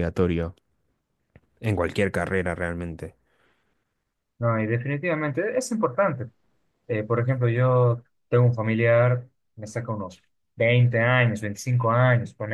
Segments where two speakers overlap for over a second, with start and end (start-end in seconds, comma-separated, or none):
none